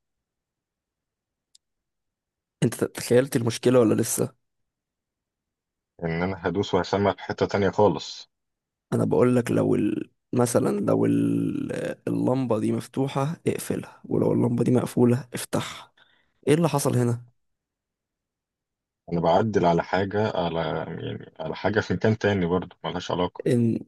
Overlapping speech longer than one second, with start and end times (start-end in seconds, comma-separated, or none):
none